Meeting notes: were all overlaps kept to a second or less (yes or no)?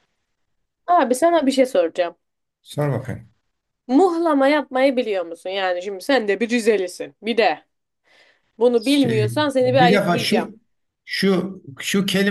no